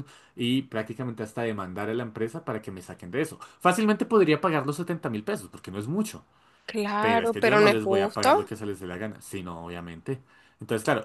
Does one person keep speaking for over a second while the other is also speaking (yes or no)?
yes